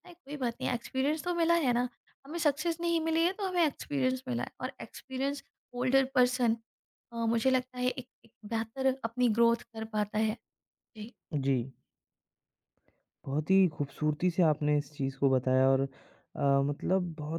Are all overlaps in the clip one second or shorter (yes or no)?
yes